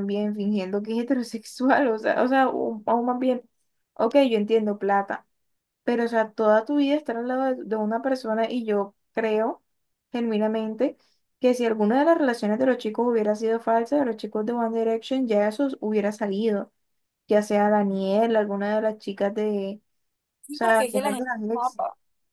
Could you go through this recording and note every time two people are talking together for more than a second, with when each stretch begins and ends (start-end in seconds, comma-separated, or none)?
20.4-21.8